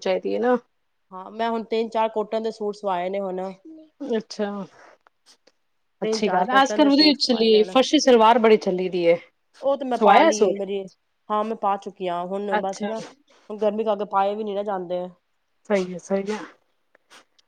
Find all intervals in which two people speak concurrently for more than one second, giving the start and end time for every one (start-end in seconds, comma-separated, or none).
6.0-7.8